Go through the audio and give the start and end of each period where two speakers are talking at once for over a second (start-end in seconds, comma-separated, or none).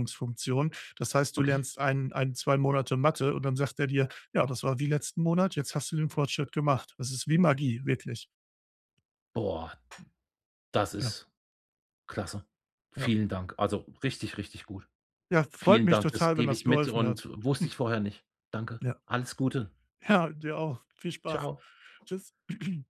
15.6-17.8